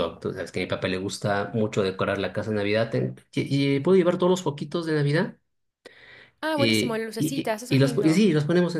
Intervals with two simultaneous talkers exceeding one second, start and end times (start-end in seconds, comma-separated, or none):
6.5-8.3